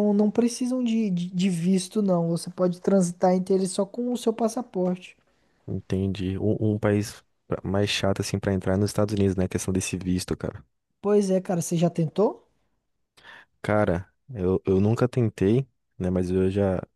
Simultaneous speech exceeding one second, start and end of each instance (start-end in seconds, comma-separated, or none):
none